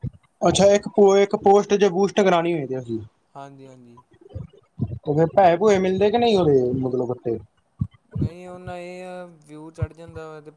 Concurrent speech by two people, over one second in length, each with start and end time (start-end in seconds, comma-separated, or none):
none